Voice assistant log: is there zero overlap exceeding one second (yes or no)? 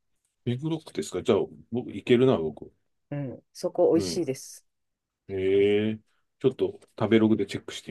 yes